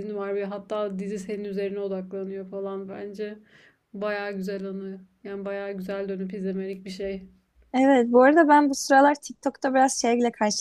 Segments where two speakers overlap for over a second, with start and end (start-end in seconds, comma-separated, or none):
none